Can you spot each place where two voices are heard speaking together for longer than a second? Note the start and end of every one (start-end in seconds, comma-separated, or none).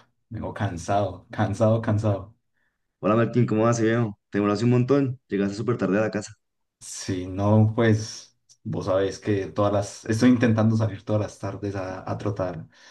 none